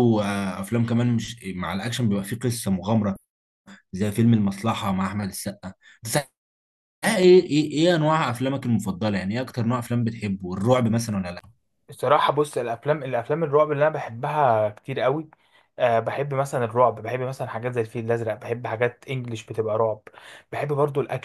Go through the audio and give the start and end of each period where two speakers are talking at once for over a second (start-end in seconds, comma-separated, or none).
none